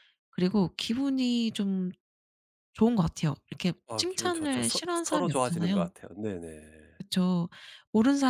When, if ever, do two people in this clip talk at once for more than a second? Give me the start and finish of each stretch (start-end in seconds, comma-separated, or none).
3.9-5.9